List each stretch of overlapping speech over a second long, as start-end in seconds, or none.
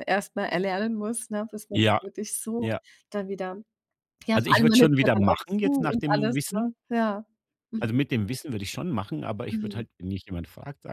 4.3-6.7